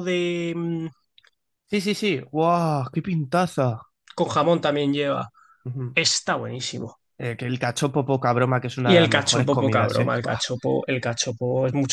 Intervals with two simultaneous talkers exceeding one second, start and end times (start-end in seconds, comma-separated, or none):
8.8-10.4